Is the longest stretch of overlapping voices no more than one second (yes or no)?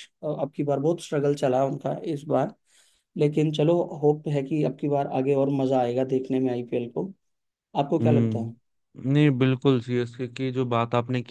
yes